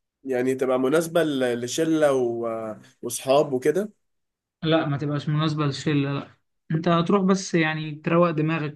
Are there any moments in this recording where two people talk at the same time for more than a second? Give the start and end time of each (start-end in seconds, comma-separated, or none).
none